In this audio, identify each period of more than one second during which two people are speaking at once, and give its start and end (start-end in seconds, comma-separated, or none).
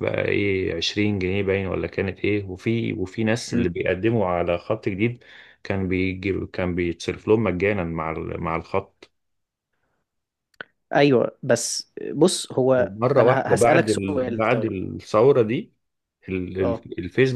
12.8-14.8